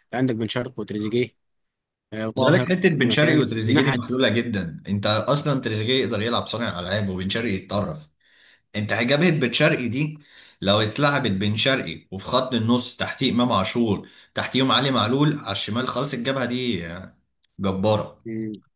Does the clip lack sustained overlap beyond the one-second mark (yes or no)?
no